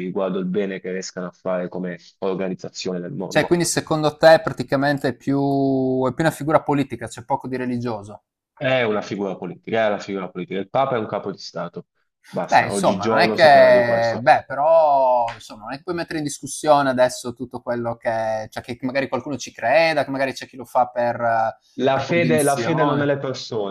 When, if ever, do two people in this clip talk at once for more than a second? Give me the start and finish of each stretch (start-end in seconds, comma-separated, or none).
12.5-14.3, 21.8-23.1